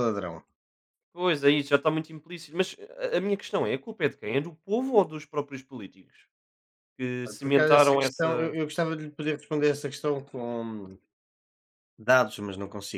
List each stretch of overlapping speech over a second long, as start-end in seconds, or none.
7.3-8.6